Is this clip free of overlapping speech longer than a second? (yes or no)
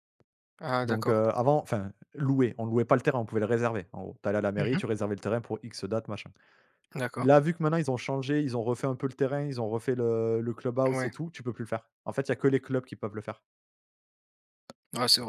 yes